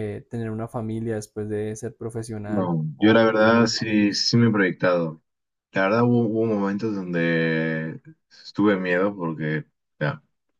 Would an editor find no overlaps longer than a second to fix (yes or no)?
no